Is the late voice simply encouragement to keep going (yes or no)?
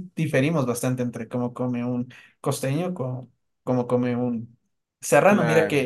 yes